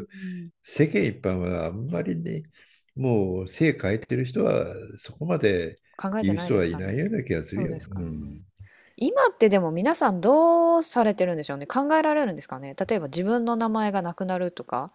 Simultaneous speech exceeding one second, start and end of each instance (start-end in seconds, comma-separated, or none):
6.2-8.1